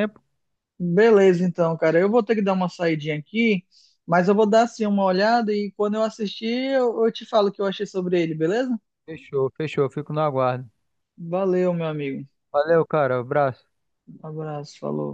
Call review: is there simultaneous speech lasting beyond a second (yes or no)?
no